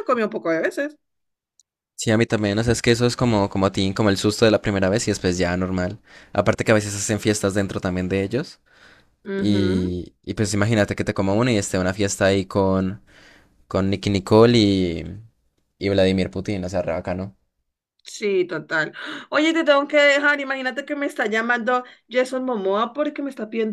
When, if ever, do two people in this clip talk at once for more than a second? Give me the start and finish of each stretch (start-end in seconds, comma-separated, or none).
none